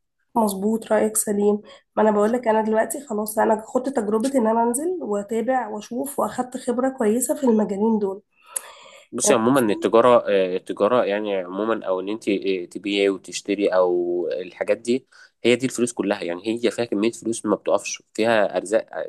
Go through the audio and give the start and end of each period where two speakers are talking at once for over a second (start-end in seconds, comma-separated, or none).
none